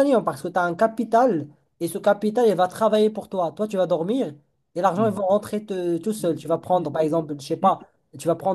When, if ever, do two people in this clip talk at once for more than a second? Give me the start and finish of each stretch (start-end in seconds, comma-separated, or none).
6.2-7.8